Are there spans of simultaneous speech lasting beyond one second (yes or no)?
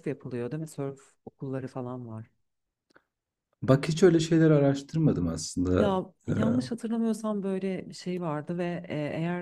no